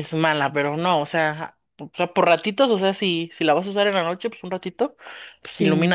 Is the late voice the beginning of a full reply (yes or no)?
no